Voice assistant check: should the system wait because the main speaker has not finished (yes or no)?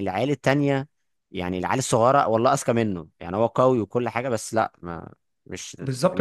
no